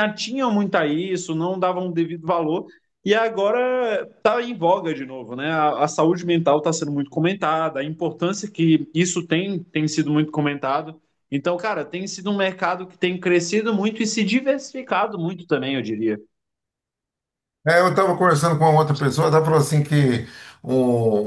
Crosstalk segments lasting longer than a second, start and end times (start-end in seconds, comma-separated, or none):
none